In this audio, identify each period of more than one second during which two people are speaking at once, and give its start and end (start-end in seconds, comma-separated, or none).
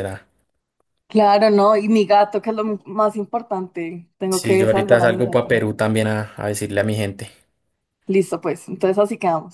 4.3-5.5